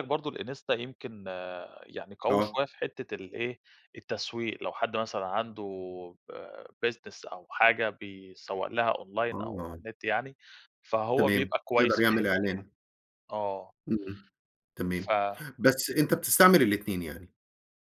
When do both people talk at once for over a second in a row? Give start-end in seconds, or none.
11.2-12.7